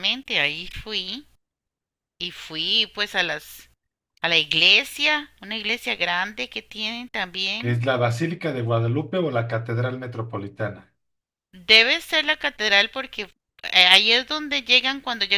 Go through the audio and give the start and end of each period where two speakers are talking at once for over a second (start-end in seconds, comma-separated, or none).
none